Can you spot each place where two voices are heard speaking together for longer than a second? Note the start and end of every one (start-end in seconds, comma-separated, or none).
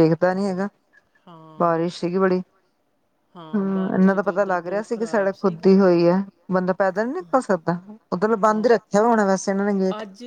3.5-5.6